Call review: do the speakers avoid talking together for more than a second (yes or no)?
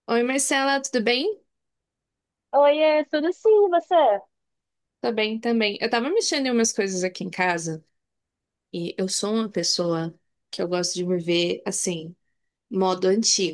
yes